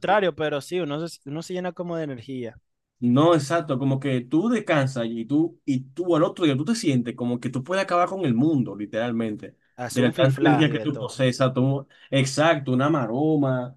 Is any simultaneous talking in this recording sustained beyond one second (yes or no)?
yes